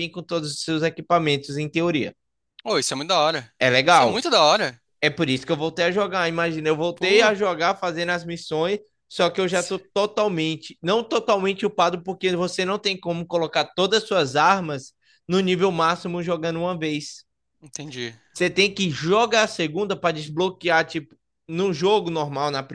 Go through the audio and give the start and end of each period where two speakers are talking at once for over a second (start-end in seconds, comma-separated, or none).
none